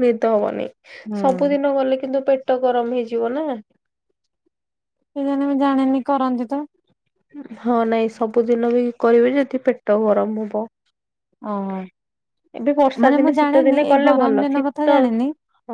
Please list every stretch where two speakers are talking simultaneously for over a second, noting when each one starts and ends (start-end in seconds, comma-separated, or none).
13.1-14.9